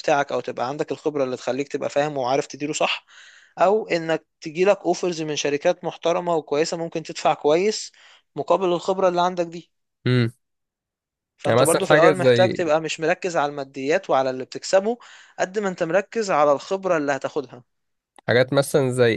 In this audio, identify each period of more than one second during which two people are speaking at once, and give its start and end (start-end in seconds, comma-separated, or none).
11.5-12.7